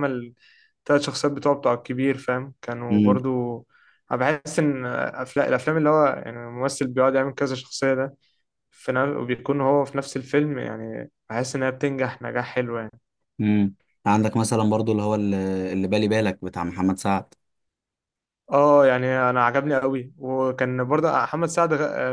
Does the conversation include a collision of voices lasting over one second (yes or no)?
no